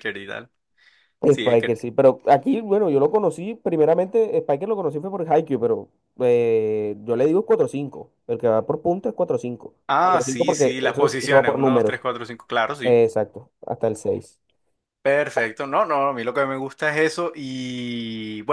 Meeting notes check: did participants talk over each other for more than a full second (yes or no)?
yes